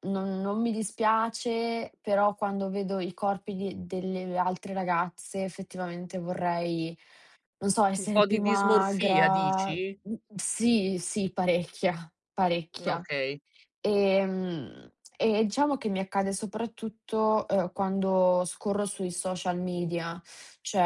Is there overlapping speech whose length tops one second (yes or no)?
yes